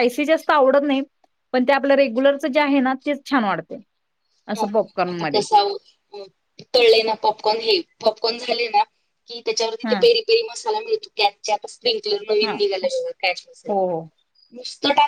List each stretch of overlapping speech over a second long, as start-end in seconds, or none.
none